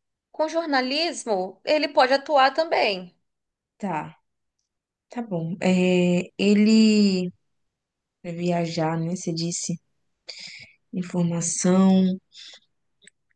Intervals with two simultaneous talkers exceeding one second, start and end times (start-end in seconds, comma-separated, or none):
none